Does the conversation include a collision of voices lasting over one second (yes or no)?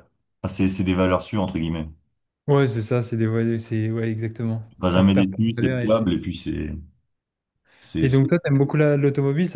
yes